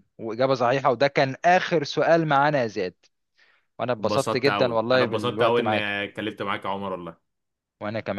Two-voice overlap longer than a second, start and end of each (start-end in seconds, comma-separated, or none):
4.0-5.9